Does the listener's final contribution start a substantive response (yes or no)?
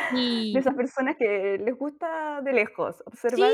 yes